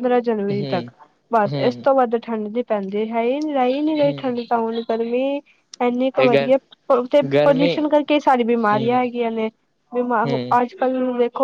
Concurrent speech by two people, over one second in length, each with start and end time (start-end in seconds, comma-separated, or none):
none